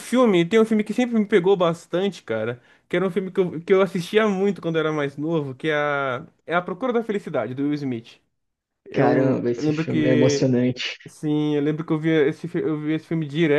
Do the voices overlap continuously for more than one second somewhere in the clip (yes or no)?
yes